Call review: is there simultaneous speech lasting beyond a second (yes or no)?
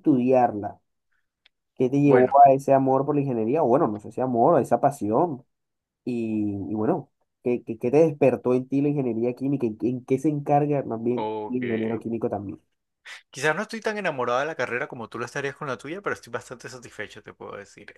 no